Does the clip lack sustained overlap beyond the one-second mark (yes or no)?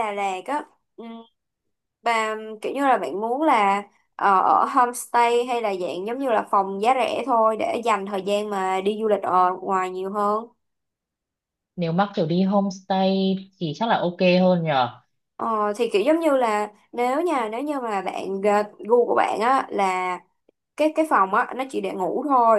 yes